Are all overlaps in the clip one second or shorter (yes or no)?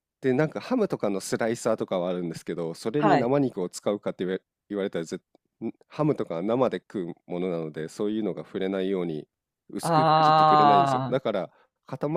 no